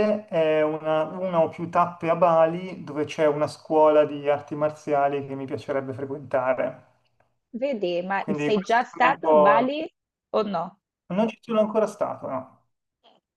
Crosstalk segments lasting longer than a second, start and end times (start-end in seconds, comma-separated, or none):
8.2-9.7